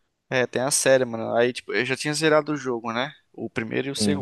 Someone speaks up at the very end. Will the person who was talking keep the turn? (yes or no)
yes